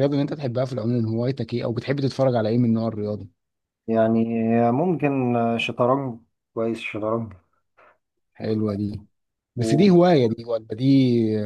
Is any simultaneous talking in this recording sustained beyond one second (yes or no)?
no